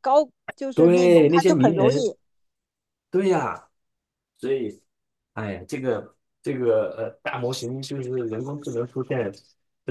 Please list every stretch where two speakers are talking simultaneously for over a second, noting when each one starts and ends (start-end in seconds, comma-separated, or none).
0.7-2.1